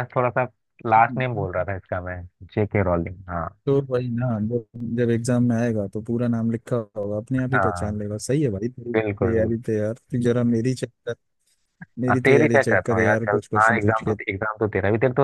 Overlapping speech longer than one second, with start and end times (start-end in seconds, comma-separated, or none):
12.1-14.2